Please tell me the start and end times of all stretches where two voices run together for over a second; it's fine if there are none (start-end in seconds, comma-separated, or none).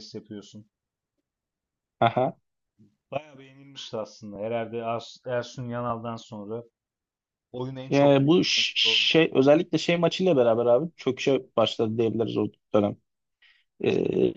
7.9-9.2